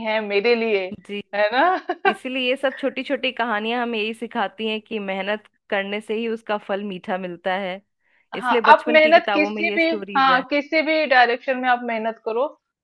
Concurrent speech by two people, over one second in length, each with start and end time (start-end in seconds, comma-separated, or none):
8.3-10.4